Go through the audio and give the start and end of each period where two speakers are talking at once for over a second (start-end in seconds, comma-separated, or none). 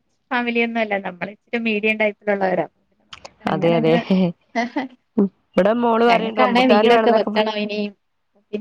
6.1-7.6